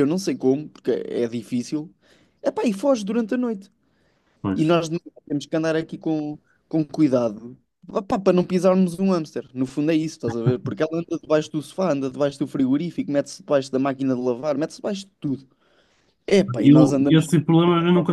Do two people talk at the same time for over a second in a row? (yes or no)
no